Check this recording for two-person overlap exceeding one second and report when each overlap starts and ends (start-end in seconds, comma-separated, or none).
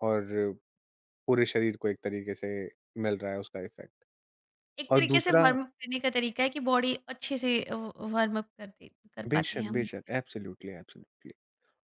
none